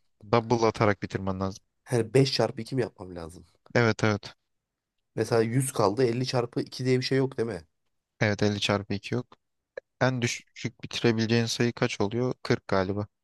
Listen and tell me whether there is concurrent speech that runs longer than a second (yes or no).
no